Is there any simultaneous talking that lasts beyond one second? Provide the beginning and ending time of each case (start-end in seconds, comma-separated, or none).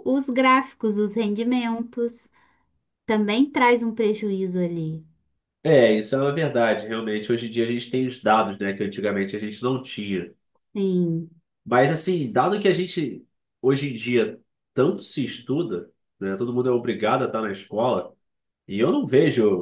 none